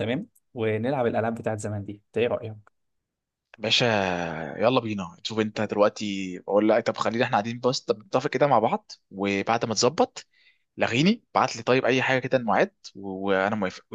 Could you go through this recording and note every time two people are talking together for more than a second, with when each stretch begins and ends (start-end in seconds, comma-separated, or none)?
none